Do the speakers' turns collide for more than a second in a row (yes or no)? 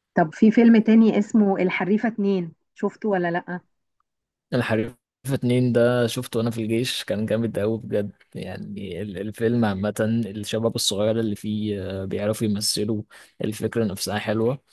no